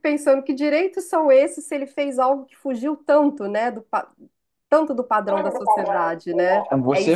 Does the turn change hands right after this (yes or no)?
yes